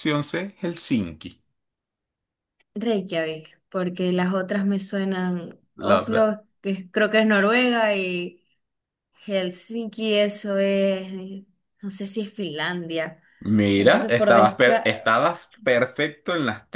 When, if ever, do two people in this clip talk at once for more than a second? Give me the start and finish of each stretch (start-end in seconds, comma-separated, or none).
13.7-15.1